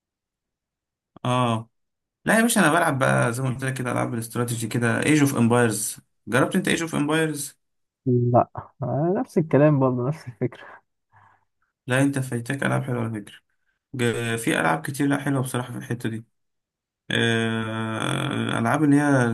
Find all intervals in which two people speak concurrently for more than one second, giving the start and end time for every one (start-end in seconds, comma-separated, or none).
none